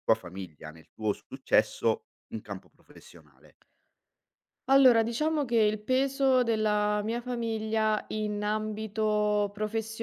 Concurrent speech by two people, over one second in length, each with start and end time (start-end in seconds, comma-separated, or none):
none